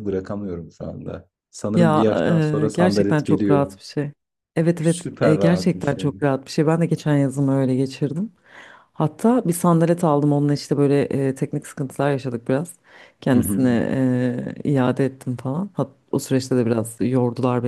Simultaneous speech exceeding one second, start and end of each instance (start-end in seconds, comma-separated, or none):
1.7-3.6, 4.8-6.1